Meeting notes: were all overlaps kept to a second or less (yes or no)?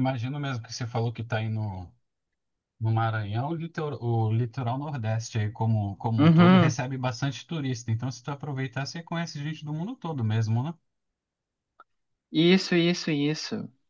yes